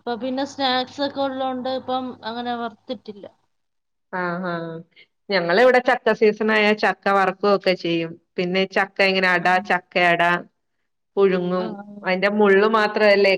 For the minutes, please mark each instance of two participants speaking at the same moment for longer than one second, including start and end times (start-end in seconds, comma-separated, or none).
none